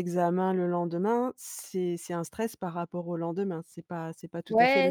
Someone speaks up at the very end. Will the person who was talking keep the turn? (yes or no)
no